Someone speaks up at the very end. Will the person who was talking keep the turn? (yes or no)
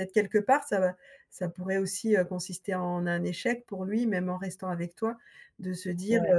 yes